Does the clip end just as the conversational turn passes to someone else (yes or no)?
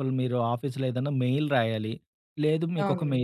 no